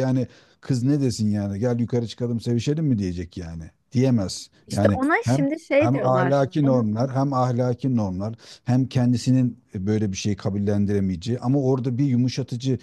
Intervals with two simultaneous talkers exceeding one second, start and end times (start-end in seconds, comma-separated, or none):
4.7-6.9